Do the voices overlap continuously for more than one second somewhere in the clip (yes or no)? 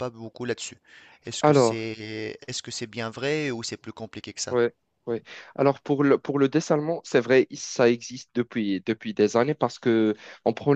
no